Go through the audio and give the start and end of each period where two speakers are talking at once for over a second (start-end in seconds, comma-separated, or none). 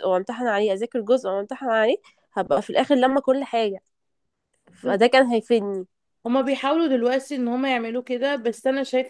none